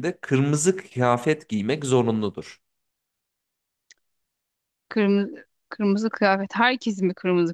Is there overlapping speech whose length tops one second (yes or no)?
no